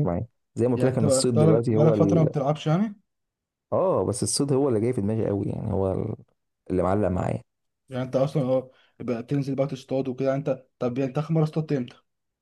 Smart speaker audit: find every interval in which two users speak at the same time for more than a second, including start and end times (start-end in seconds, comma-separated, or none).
0.7-2.3